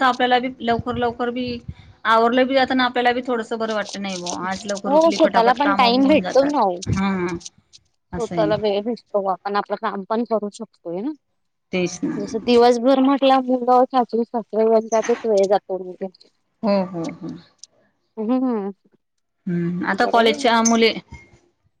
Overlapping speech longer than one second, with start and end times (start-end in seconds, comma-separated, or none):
5.0-6.5